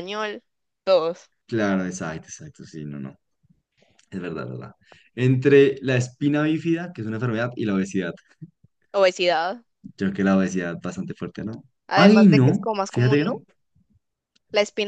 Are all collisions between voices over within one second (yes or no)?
no